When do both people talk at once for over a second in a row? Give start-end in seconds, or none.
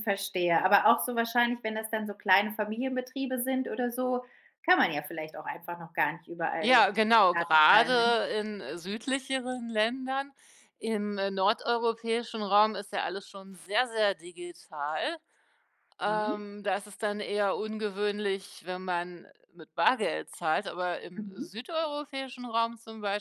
6.6-8.2